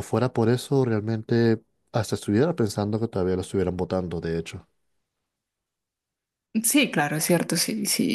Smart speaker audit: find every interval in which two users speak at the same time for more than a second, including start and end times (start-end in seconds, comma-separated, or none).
none